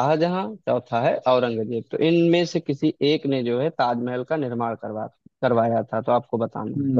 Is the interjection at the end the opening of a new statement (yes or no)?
yes